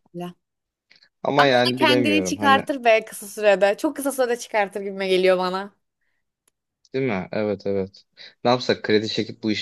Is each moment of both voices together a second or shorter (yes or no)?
no